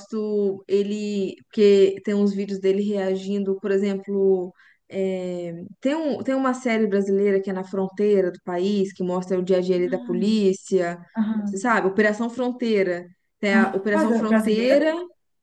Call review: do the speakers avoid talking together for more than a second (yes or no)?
no